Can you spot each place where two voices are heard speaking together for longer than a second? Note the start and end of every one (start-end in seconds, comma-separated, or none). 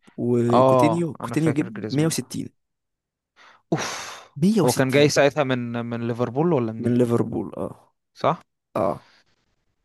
0.5-2.3